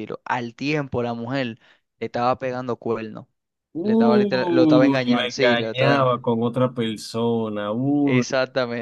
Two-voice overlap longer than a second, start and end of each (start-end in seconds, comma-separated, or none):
3.8-6.1